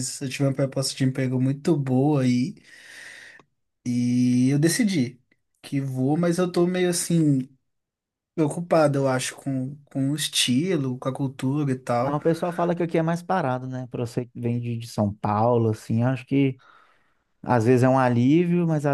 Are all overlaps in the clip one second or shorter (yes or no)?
yes